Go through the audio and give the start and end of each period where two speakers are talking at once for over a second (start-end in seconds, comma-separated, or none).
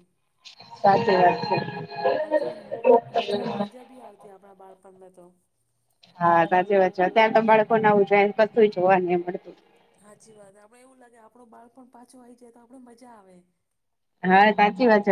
none